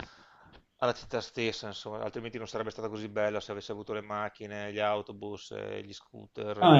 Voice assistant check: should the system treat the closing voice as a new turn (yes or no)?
yes